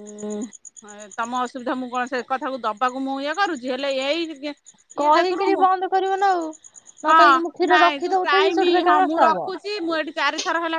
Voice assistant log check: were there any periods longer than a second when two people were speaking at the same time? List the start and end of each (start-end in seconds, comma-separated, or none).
7.1-9.5